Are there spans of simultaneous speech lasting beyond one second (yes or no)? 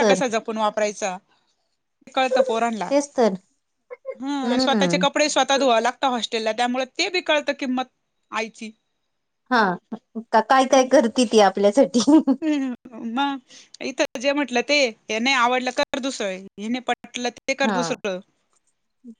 no